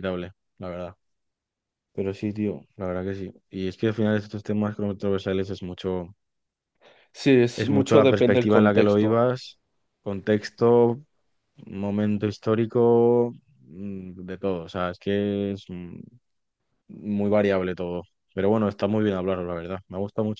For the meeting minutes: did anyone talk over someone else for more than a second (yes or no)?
yes